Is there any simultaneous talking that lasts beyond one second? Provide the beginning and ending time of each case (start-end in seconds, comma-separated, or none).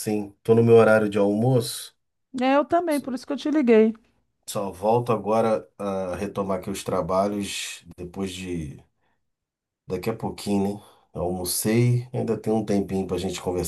none